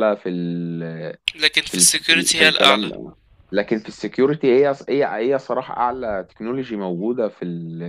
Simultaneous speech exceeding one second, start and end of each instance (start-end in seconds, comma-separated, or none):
1.7-2.9